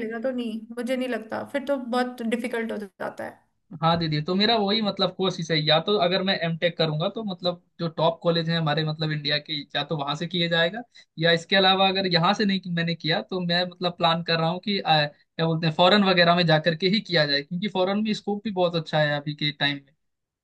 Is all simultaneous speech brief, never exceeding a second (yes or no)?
yes